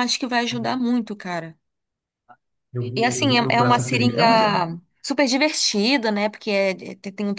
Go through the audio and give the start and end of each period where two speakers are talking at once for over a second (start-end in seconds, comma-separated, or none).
2.9-4.6